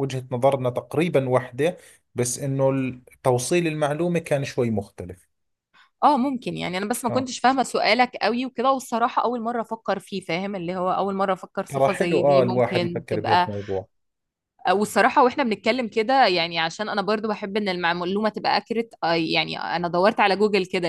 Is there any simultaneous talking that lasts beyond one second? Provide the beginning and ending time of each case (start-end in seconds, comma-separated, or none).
11.7-13.5